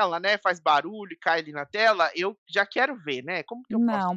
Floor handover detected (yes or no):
yes